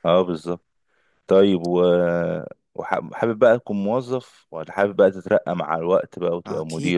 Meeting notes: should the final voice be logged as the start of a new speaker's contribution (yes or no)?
yes